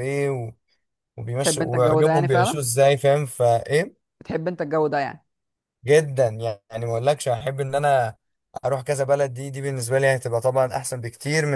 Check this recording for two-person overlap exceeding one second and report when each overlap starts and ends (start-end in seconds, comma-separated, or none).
1.4-2.6